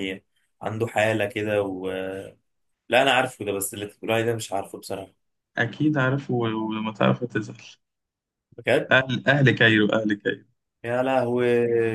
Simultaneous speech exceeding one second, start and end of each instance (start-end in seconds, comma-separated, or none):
none